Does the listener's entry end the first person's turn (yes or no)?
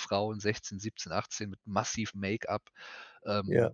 no